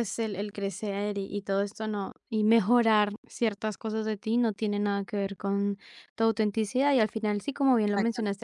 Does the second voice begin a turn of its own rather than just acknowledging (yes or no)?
no